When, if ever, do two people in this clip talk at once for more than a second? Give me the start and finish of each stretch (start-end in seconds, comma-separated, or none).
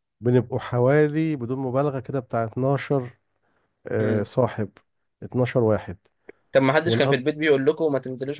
none